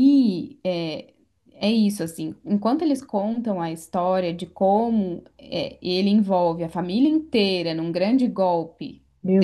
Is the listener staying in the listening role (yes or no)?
no